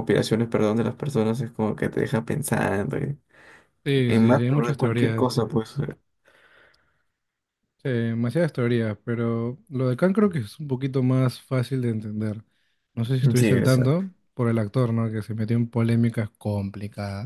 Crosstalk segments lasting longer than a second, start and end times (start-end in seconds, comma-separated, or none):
4.0-5.3